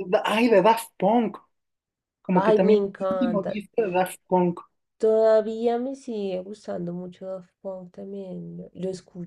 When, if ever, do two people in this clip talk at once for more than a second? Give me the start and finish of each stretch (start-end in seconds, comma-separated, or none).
2.3-3.6